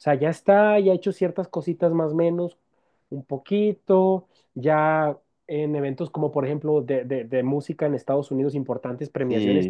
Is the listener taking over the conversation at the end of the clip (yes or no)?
no